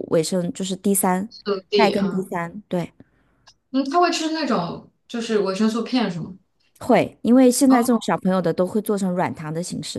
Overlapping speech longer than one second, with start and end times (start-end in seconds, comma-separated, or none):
none